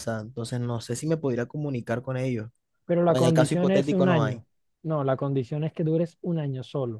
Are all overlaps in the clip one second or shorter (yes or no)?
no